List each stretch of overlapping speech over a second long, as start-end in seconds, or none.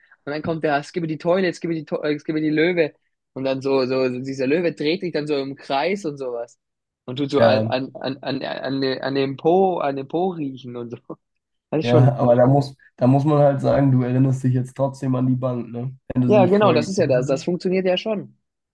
16.3-17.5